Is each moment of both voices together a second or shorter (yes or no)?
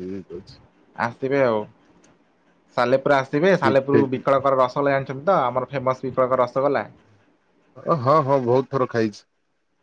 yes